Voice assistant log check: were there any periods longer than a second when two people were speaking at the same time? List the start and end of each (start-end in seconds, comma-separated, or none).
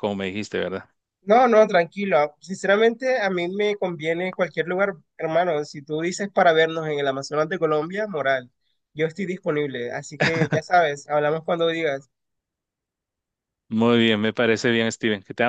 none